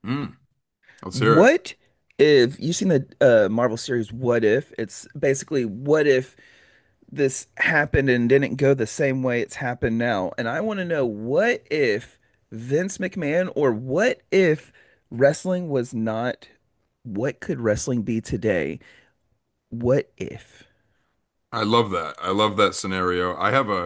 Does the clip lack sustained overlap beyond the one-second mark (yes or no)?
yes